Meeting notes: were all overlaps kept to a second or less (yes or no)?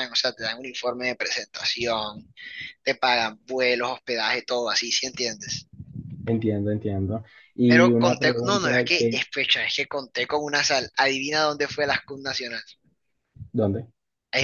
no